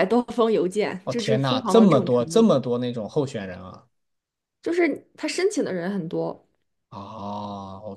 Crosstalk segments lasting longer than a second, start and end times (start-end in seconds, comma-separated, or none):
1.0-2.5